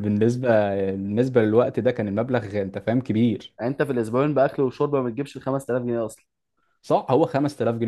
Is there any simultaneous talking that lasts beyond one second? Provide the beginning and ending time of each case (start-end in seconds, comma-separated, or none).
none